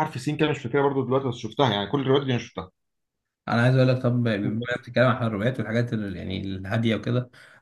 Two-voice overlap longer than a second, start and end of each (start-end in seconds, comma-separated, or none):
none